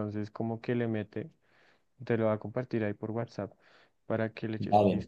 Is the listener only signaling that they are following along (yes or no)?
no